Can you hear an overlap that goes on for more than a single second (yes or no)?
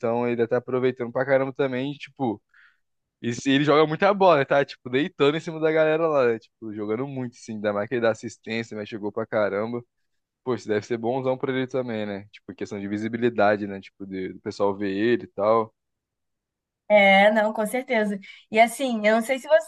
no